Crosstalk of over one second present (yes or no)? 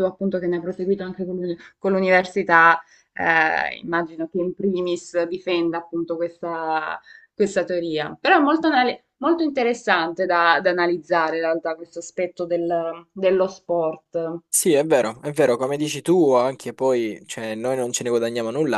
no